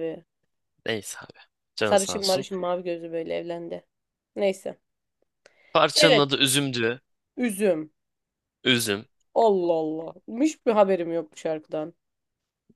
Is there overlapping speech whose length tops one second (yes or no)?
no